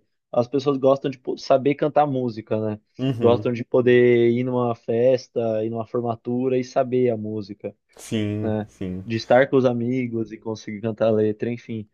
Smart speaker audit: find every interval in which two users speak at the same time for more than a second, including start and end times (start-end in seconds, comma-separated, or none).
none